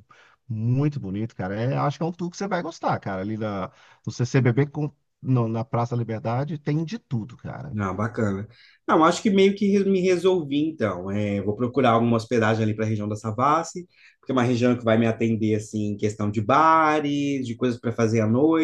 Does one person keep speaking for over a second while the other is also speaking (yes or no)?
no